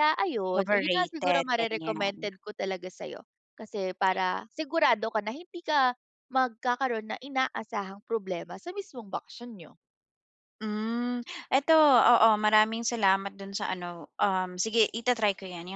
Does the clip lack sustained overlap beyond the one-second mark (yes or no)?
no